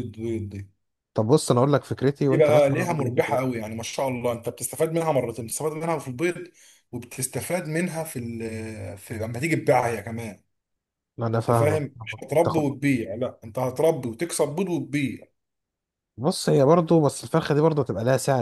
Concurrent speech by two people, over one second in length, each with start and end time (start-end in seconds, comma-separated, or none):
2.3-3.6